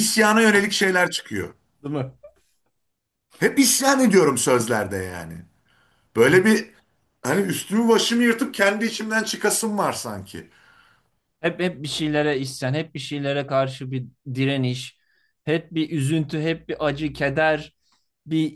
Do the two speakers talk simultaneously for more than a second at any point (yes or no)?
no